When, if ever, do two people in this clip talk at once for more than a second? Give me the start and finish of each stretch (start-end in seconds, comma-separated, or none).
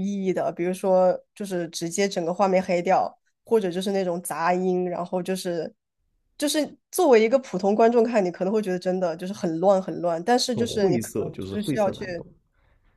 10.5-12.1